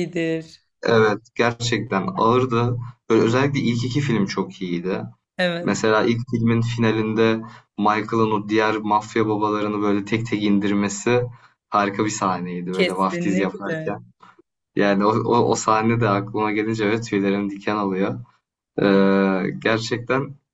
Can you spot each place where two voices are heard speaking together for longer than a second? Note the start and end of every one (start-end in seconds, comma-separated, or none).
12.7-14.0